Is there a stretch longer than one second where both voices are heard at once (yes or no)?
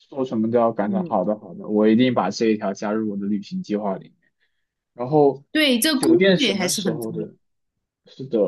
yes